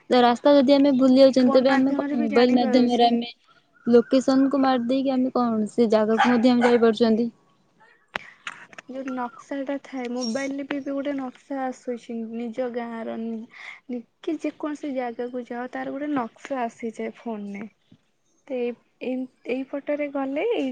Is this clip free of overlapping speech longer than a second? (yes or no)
no